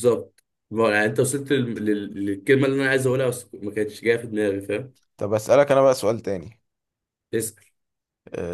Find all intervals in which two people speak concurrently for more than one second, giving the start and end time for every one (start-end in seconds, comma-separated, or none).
none